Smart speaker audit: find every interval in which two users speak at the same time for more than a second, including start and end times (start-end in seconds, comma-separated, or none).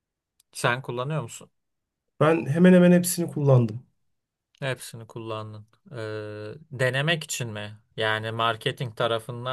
none